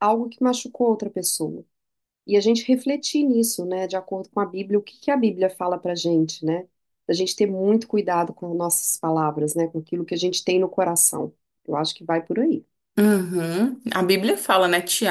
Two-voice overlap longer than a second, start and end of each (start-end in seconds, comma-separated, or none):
none